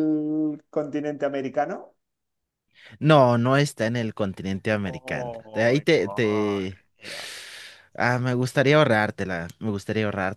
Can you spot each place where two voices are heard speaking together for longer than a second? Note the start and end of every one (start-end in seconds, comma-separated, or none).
4.8-6.8